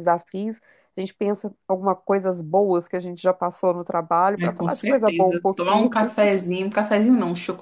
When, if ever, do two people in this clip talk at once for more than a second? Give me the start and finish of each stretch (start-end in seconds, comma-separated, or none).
4.4-5.9